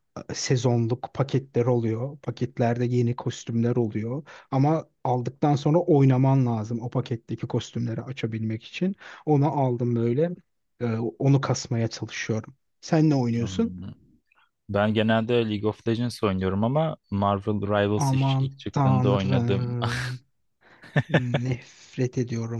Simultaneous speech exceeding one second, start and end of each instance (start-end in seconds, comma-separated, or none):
18.0-19.8